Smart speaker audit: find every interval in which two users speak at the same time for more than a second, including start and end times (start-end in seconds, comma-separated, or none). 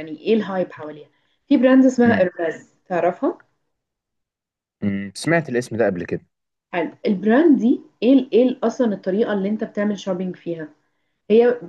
none